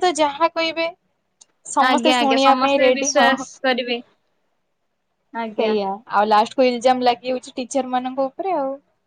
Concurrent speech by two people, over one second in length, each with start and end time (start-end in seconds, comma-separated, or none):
1.9-3.4